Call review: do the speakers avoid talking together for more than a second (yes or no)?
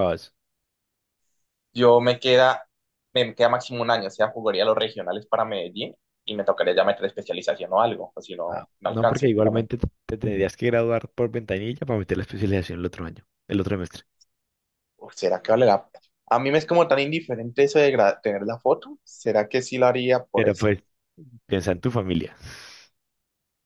no